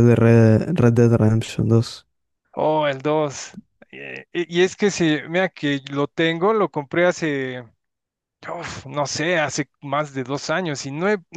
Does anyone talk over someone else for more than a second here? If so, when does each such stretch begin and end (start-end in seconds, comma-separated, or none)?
none